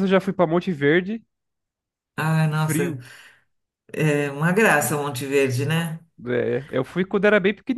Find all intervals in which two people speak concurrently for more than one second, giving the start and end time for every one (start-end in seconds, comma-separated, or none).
none